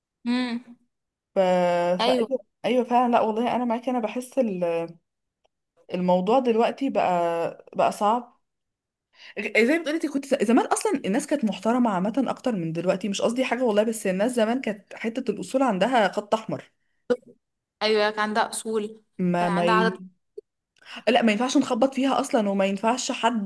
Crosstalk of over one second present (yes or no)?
no